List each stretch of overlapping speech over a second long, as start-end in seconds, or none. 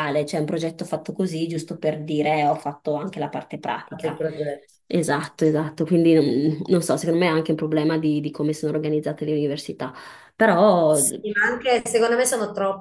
none